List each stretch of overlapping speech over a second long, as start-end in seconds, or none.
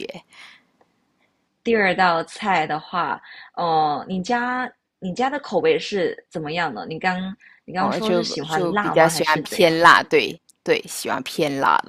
7.8-9.7